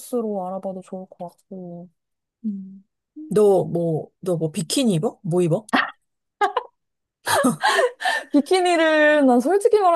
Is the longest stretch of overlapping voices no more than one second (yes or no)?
yes